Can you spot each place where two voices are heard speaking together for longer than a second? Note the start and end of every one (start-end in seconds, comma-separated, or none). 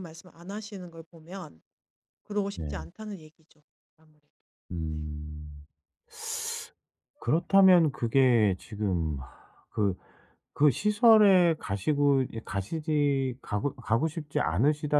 none